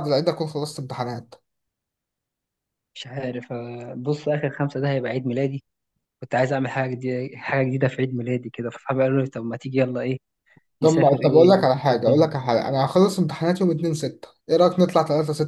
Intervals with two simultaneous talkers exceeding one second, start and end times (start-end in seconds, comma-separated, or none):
10.8-12.3